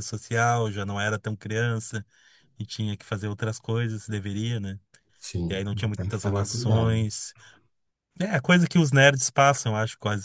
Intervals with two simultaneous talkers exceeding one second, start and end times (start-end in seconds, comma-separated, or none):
5.5-7.0